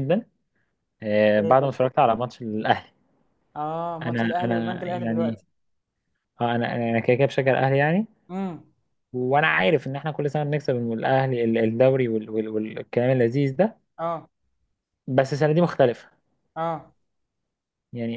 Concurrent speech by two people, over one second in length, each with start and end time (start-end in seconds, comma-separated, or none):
4.0-5.4